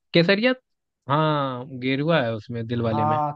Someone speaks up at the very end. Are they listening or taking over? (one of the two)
taking over